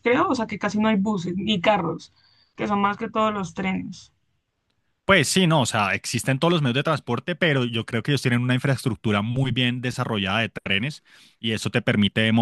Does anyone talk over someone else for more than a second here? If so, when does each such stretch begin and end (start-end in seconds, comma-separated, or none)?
none